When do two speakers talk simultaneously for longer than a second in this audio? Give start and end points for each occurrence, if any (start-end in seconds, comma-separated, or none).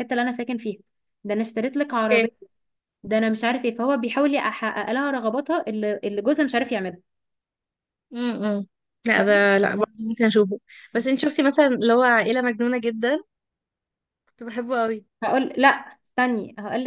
none